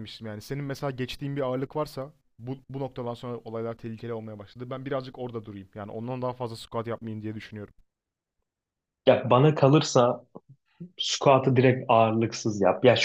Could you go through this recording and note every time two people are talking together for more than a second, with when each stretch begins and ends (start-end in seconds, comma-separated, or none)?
none